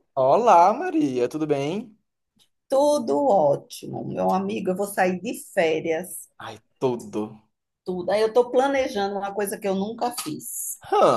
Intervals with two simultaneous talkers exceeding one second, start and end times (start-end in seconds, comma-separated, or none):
none